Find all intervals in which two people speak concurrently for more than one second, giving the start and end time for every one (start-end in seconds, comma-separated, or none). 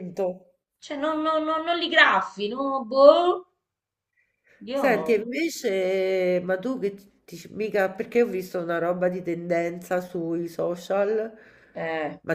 none